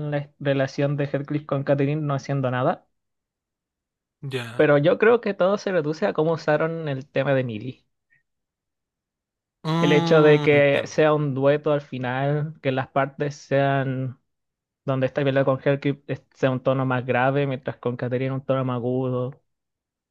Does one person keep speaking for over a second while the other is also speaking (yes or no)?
yes